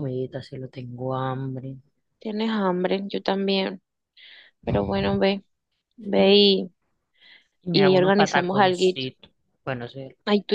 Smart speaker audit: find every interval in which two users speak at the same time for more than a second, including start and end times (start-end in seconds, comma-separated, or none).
7.7-9.1